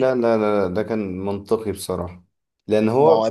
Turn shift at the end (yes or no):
no